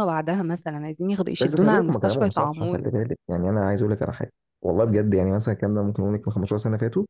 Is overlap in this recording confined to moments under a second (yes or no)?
no